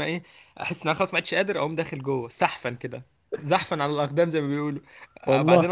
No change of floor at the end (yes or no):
yes